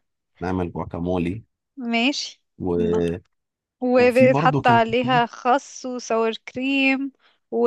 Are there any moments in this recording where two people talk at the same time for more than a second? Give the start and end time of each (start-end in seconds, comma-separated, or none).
4.0-5.2